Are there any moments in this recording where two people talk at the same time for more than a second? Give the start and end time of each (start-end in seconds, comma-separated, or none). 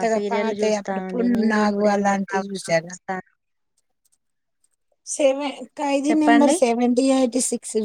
0.6-2.8